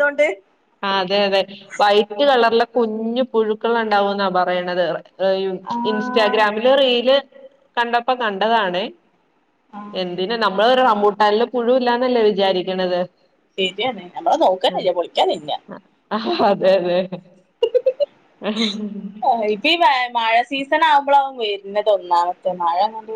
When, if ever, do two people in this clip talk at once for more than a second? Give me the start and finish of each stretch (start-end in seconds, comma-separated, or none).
none